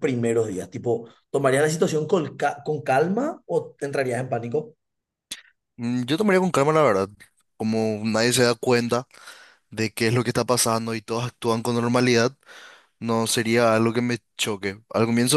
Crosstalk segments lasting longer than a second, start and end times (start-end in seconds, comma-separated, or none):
none